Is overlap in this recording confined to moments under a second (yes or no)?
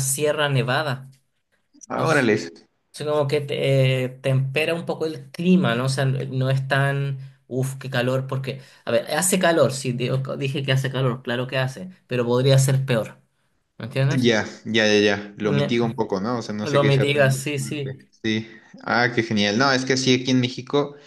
no